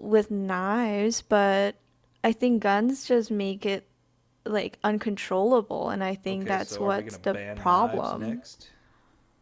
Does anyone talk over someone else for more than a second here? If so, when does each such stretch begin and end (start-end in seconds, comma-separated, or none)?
6.2-8.4